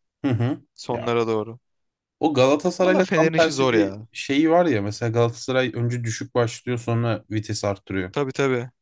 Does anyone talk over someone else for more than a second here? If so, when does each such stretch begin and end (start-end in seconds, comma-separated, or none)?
2.8-4.1